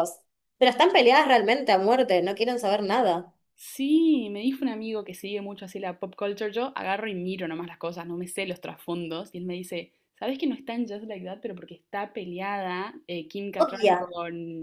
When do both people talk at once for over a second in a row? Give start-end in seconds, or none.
none